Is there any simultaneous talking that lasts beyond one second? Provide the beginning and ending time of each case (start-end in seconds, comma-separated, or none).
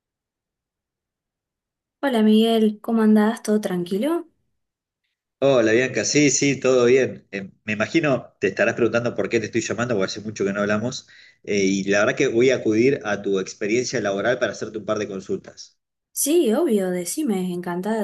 none